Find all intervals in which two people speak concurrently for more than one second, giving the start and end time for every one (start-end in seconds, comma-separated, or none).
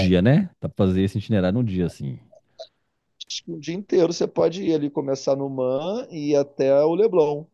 none